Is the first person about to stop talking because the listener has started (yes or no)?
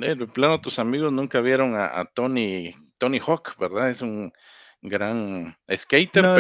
yes